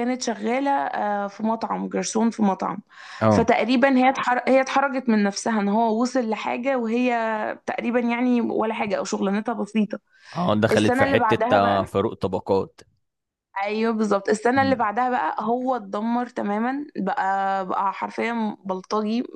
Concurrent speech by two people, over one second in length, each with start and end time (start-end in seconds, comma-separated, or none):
10.7-11.9